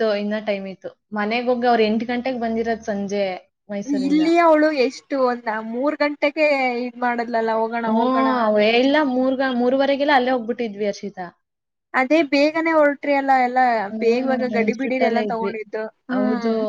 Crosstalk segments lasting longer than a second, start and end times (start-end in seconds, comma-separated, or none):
14.0-15.5